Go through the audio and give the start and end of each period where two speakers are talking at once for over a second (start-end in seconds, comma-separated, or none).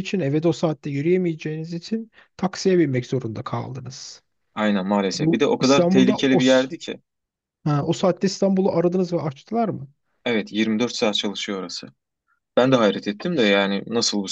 5.1-6.7